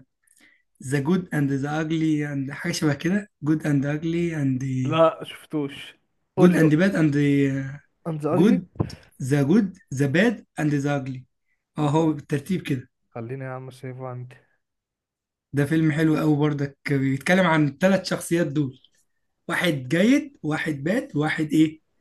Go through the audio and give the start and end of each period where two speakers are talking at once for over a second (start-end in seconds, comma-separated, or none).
none